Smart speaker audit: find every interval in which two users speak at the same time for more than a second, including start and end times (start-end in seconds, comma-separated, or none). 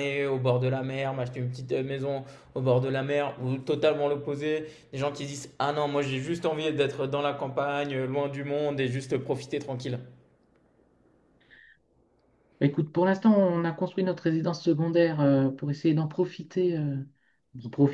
none